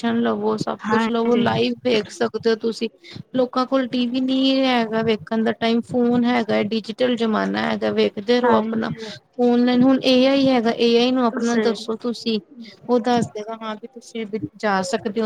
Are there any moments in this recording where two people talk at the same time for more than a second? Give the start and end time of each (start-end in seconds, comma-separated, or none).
none